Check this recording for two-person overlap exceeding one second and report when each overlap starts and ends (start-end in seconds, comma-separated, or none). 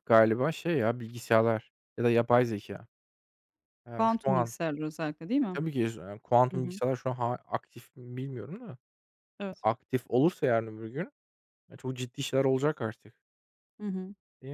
none